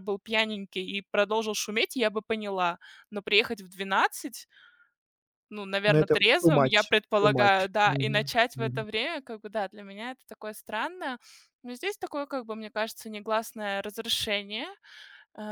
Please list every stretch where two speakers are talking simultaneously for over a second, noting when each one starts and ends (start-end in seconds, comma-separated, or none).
5.9-8.9